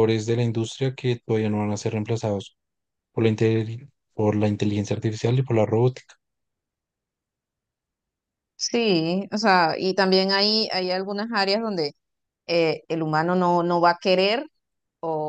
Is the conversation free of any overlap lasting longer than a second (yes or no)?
yes